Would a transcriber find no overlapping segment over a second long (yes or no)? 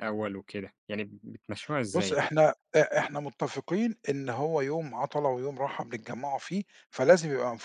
yes